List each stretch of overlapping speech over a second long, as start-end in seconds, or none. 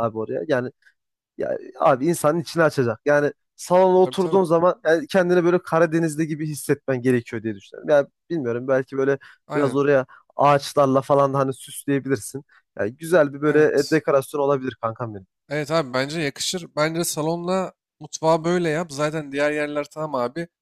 none